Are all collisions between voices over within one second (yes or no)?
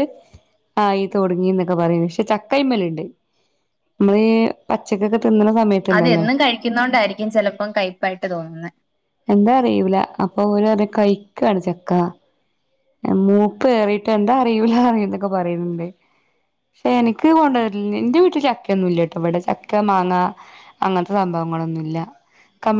yes